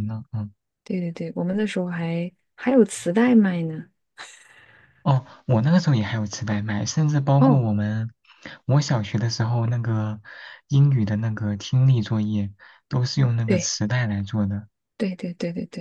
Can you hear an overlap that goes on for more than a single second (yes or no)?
no